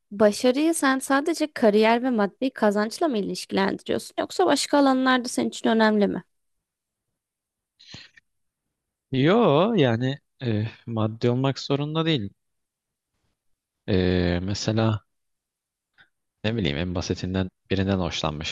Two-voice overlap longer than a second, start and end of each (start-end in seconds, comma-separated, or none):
none